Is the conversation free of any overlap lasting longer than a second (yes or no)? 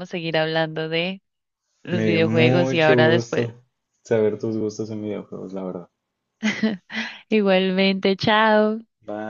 no